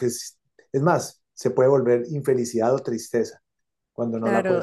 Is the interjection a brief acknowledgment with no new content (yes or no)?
no